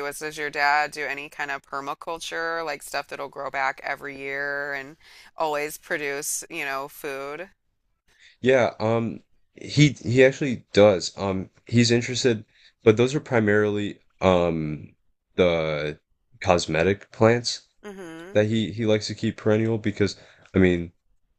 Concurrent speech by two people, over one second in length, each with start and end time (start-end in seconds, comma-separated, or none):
none